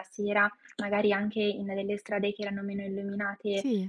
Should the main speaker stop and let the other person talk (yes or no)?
no